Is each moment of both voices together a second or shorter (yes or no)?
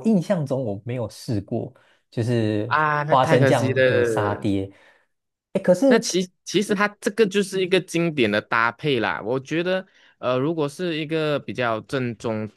no